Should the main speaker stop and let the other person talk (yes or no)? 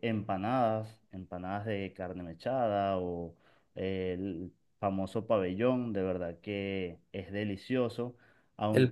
yes